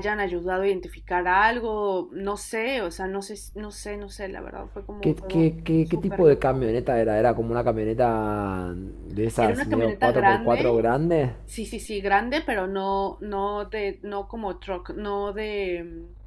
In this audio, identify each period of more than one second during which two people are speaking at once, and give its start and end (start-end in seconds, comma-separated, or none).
5.0-6.6, 9.4-10.9